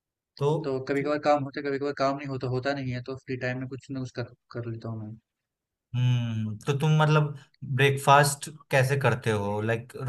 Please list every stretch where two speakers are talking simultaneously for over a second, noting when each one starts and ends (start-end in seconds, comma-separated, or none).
none